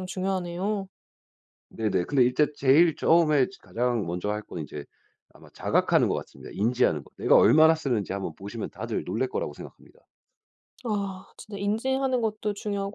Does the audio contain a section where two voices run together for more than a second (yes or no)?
no